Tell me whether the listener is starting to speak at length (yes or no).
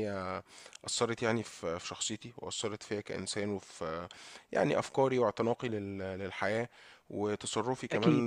no